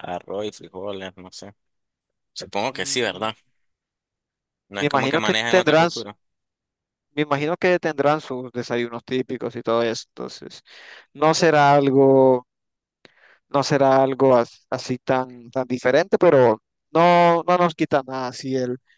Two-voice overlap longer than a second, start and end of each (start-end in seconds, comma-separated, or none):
4.7-6.0